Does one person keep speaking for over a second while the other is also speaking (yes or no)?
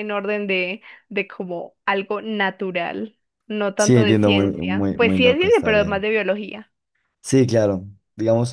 yes